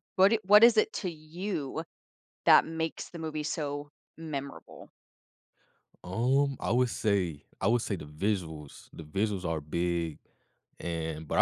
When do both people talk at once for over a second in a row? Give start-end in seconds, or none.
none